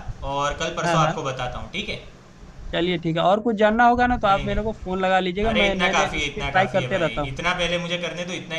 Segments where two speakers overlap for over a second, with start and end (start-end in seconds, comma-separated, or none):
5.5-7.4